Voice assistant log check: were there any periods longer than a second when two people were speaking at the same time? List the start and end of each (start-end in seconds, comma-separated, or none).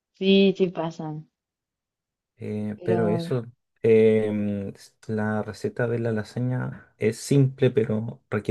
none